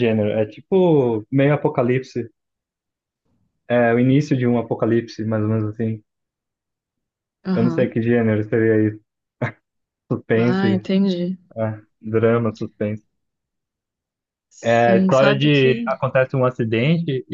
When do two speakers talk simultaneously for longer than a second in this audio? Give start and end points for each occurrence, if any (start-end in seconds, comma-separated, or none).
14.6-15.9